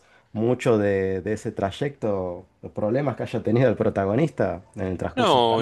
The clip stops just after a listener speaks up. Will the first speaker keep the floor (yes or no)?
no